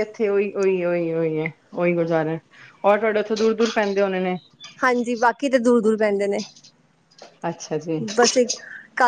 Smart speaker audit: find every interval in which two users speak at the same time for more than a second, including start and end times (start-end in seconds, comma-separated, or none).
none